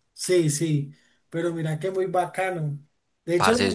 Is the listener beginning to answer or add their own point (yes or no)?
no